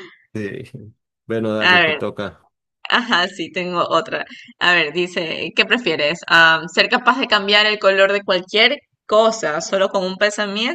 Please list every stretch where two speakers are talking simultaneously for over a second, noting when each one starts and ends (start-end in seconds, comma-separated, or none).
none